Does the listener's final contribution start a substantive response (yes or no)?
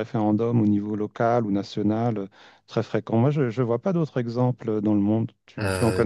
yes